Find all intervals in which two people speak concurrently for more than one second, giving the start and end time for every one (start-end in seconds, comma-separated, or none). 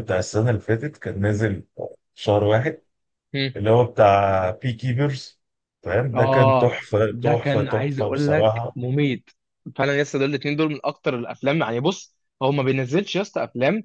6.1-8.8